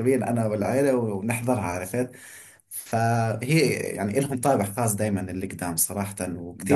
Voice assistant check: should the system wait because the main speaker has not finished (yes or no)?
yes